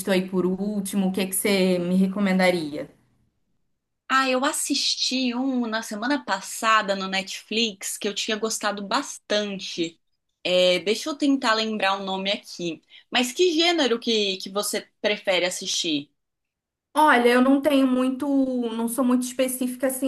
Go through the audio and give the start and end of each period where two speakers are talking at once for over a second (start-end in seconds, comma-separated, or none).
none